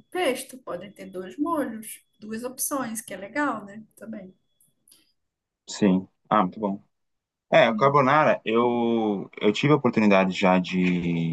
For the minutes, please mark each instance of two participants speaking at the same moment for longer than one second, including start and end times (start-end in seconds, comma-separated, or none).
none